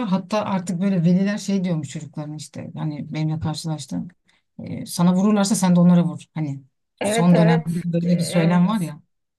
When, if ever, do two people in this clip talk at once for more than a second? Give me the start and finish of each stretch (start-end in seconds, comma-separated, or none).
7.0-8.7